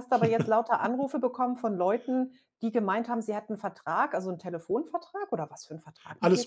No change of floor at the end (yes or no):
no